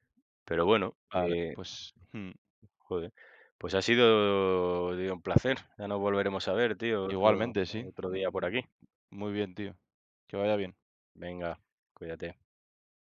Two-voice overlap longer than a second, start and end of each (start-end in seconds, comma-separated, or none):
7.1-8.6